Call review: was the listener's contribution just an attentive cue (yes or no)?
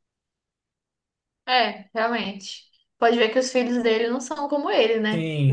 no